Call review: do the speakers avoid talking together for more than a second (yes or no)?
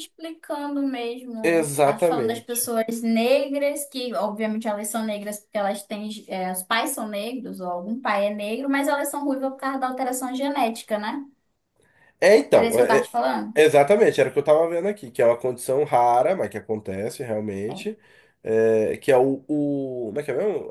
no